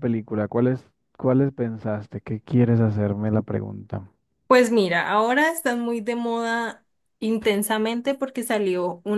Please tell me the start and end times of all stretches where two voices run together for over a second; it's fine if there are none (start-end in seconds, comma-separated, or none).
none